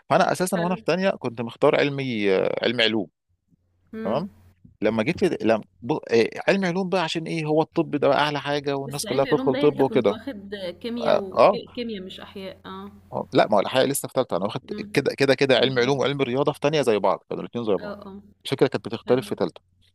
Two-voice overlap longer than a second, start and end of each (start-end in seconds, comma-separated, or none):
8.9-10.2